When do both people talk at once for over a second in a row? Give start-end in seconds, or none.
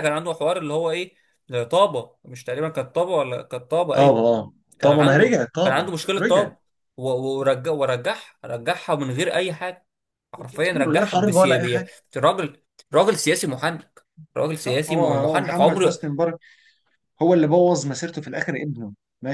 4.8-6.5, 10.7-11.9, 14.6-16.0